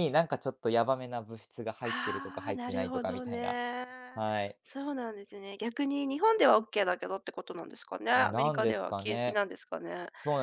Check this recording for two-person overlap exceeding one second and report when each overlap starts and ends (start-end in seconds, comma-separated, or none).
1.9-3.6, 8.2-9.4